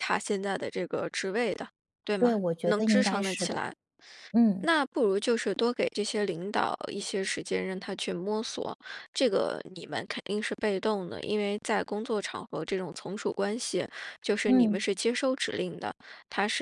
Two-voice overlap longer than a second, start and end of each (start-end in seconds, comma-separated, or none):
2.2-3.6